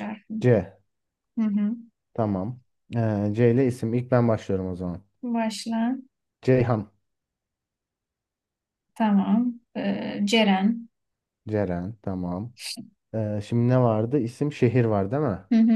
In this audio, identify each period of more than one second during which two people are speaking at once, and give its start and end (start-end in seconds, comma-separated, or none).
none